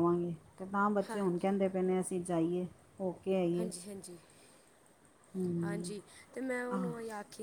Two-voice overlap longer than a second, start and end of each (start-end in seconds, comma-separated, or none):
none